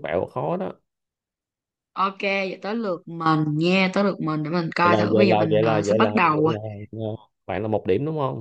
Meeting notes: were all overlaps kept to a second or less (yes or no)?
no